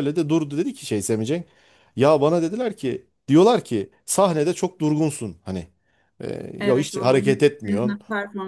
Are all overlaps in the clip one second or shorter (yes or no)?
no